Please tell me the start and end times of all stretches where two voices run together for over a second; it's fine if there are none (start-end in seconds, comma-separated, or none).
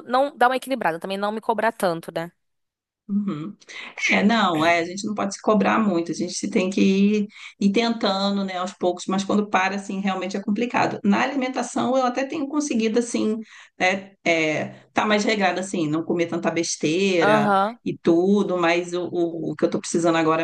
none